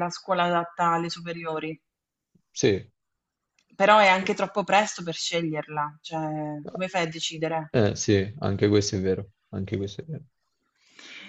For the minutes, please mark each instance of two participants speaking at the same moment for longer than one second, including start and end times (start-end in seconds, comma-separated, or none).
none